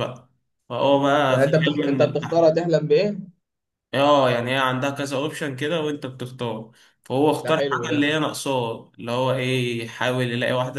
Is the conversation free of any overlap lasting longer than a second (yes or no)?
no